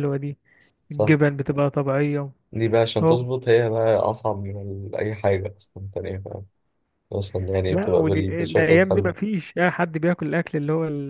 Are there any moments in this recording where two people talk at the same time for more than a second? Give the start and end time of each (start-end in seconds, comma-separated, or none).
7.7-9.1